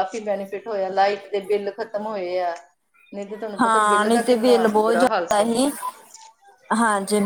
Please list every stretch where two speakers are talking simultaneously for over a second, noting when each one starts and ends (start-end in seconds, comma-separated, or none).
3.6-5.5